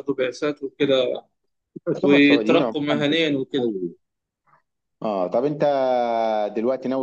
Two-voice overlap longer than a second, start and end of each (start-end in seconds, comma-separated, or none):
2.0-3.7